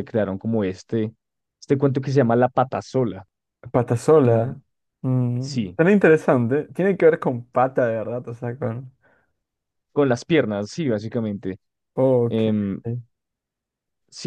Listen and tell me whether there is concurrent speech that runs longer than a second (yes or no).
no